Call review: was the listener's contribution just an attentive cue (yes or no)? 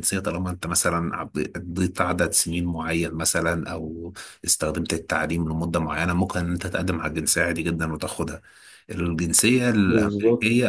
yes